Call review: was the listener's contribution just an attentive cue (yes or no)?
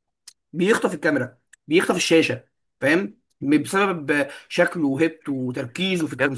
no